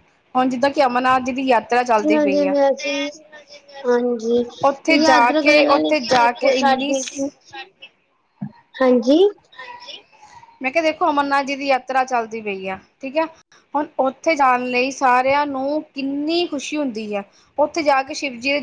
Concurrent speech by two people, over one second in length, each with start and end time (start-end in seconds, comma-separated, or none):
4.6-6.9